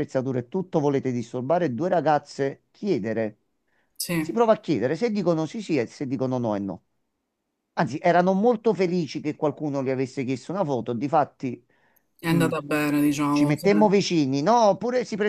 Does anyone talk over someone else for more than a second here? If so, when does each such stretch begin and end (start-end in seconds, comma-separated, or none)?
none